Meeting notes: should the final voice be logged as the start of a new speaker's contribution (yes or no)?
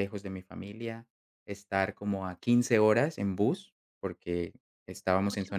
no